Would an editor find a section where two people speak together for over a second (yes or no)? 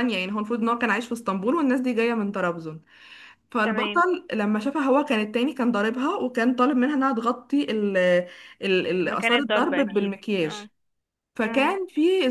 yes